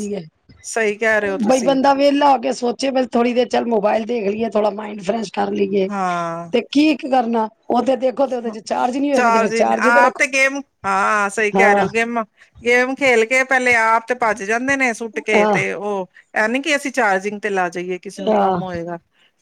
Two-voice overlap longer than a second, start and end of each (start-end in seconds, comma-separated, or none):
none